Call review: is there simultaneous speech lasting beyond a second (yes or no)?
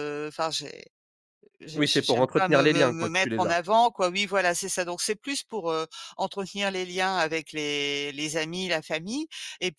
yes